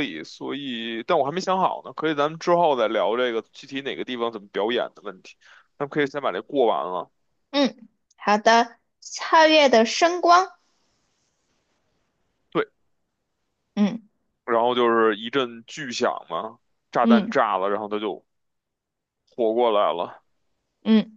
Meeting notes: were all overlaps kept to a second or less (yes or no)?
yes